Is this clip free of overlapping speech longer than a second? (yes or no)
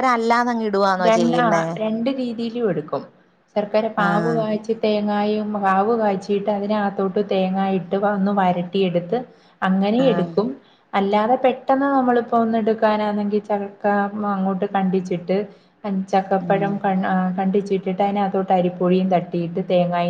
yes